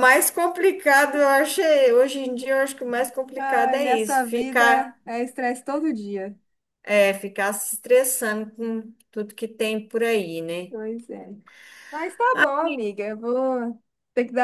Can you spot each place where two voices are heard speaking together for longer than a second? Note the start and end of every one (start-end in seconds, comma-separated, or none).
3.4-4.6